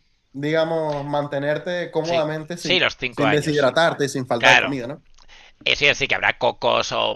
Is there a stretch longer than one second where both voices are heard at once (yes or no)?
yes